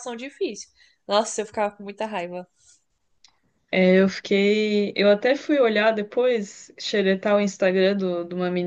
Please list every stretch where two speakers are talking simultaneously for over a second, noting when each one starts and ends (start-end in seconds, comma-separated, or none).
none